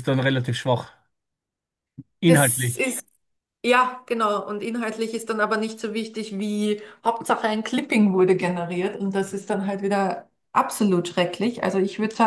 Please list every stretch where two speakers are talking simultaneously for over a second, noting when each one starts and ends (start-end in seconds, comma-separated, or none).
none